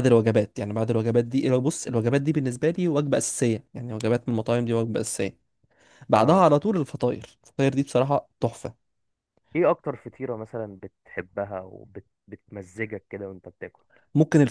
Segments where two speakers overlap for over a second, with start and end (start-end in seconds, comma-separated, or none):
none